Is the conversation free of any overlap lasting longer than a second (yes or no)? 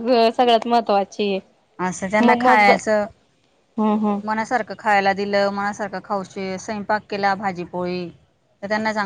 yes